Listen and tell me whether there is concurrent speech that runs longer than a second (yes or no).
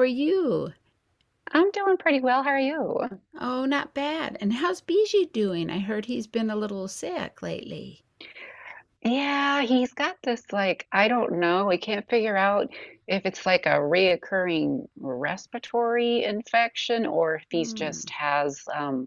no